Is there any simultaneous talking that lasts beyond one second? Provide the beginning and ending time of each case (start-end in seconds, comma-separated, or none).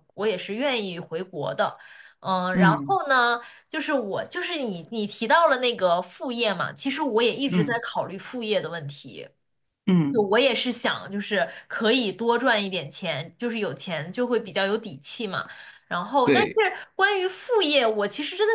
none